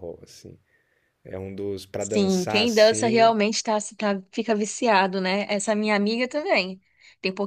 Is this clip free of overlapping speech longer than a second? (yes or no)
no